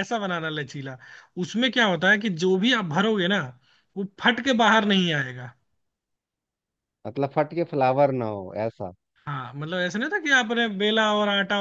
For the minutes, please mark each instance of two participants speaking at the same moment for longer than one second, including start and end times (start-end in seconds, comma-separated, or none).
none